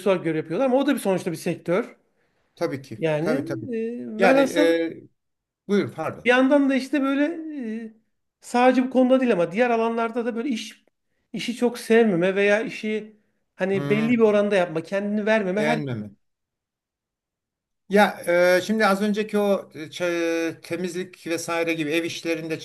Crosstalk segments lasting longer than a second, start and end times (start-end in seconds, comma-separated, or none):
none